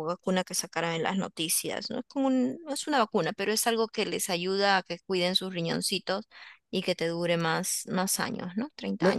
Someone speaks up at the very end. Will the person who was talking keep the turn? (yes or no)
no